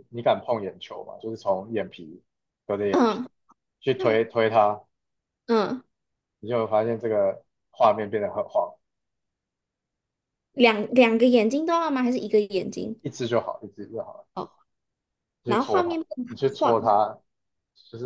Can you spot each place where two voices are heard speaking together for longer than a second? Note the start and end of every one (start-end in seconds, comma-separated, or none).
15.4-16.9